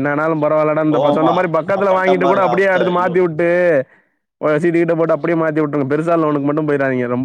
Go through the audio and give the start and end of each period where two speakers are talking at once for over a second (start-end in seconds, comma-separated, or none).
0.9-3.1